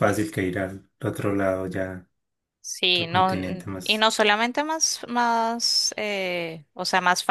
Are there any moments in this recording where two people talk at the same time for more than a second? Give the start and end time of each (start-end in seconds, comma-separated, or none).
2.9-4.1